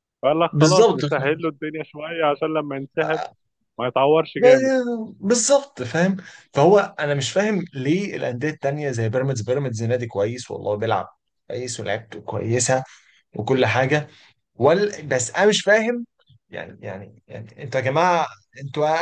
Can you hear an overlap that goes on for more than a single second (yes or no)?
no